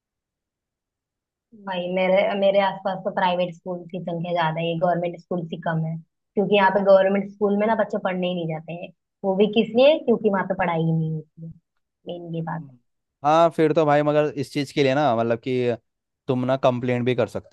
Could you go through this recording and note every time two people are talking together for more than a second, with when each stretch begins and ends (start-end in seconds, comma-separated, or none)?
none